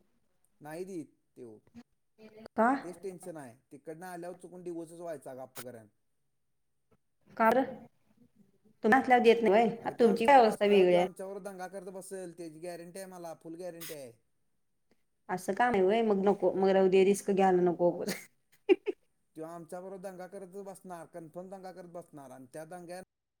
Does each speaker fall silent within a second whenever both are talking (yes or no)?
yes